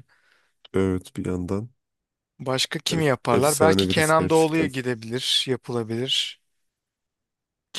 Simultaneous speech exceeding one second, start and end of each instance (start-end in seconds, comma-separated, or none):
2.9-4.7